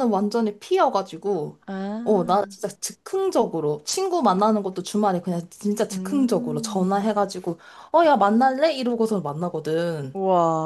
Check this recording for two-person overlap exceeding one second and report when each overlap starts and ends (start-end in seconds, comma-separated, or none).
5.9-7.1